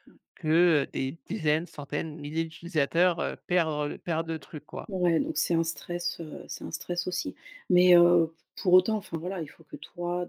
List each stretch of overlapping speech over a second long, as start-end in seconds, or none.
none